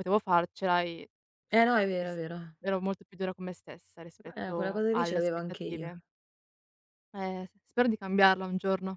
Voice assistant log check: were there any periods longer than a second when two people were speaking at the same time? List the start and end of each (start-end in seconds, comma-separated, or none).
4.3-5.9